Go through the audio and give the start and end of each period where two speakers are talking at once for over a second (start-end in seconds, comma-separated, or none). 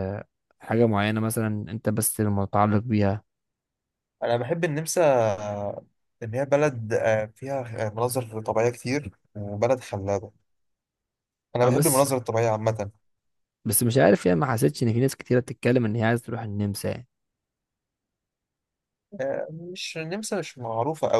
none